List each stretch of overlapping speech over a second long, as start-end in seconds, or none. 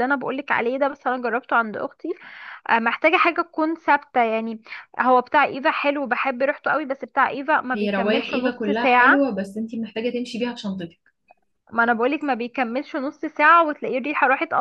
7.7-9.3